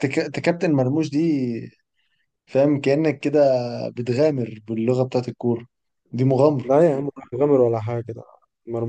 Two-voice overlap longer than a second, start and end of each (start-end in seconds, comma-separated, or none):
none